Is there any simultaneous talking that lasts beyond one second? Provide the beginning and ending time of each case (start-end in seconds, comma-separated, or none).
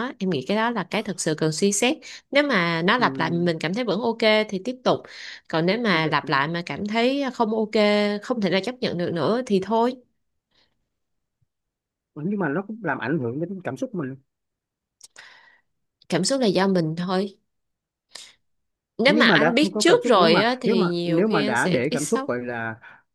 19.1-22.3